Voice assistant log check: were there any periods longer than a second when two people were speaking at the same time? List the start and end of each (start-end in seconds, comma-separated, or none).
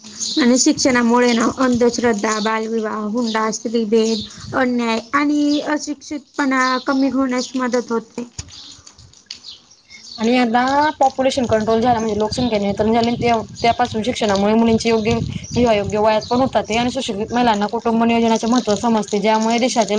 none